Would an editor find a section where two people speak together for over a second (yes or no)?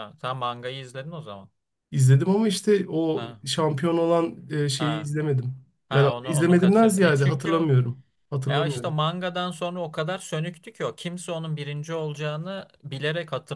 yes